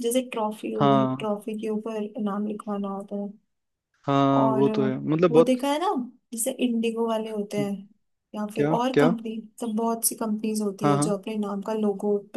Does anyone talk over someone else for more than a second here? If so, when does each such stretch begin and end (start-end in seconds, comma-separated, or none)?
none